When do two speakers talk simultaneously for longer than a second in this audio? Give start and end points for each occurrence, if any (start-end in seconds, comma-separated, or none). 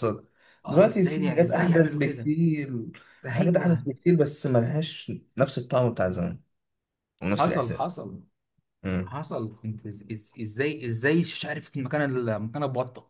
0.7-2.3